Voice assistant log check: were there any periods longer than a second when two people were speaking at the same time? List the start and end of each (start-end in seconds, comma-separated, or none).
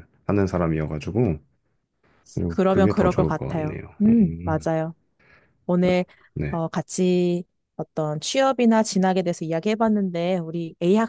2.5-4.6